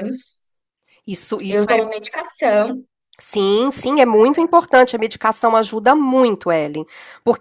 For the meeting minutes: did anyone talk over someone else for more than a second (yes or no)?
no